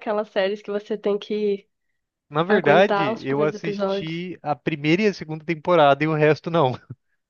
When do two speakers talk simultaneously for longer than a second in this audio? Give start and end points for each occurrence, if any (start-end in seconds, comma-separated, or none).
2.5-4.2